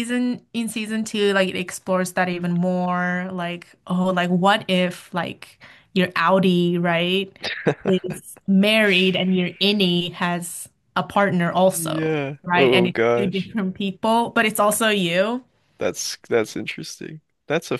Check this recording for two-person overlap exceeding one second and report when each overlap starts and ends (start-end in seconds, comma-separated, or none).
11.7-13.5